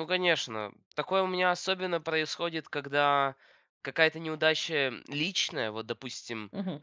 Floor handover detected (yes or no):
no